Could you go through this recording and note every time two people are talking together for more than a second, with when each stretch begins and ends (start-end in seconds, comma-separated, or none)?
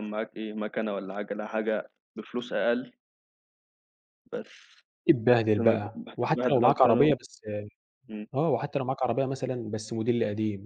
5.6-7.2